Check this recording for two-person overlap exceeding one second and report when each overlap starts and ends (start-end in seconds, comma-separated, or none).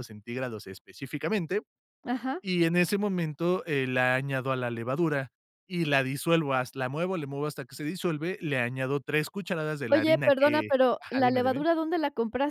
9.9-11.6